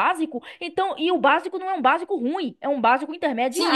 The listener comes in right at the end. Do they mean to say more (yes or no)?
yes